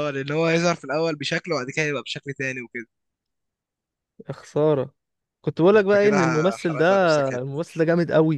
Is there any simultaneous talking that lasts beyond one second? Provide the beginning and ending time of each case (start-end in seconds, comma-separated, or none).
5.7-7.6